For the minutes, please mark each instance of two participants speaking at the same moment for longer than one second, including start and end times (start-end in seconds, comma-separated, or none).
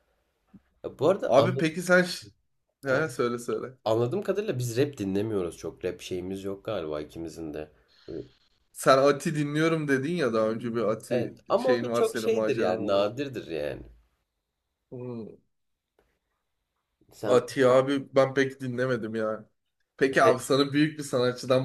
11.1-13.0